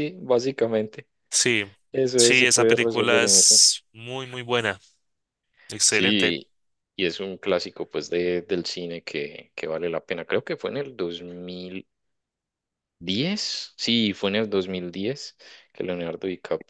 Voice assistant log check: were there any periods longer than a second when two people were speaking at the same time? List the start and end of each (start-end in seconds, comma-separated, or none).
2.2-3.6